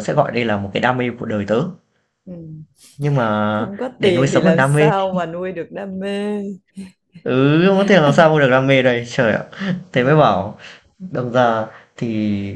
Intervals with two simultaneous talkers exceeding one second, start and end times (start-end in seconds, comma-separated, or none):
3.5-4.9